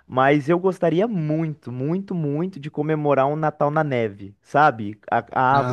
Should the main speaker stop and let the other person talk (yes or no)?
no